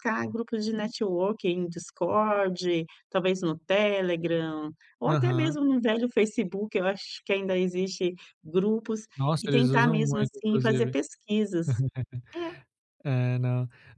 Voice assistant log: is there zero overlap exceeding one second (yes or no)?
no